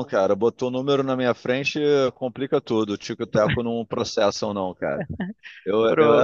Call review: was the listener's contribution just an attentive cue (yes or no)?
yes